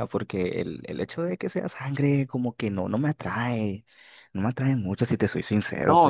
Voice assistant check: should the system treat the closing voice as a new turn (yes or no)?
yes